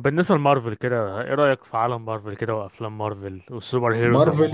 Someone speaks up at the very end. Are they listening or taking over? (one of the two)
taking over